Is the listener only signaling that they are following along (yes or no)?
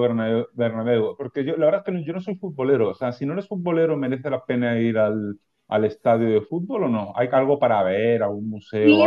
no